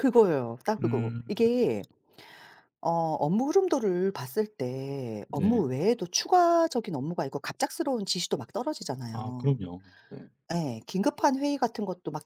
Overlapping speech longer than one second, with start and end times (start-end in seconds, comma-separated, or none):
none